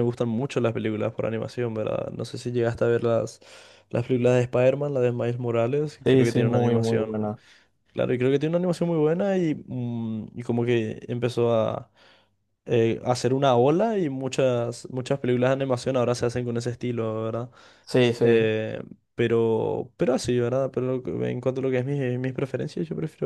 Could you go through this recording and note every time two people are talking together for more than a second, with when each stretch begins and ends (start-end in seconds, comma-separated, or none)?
6.0-7.3